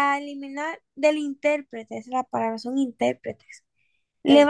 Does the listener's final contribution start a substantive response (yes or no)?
no